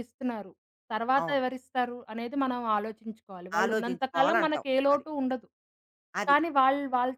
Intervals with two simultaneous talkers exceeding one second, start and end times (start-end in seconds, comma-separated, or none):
3.6-5.0